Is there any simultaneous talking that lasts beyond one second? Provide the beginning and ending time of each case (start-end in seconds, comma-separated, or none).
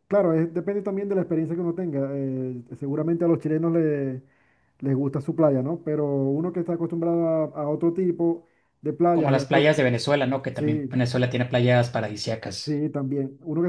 none